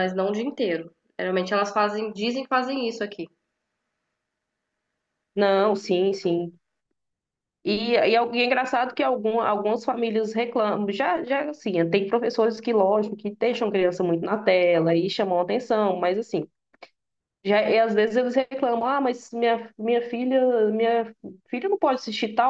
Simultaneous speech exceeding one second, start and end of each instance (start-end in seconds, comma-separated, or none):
none